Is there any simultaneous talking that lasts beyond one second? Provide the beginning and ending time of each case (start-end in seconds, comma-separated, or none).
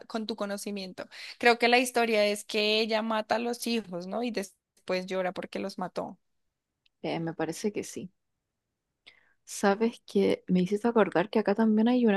none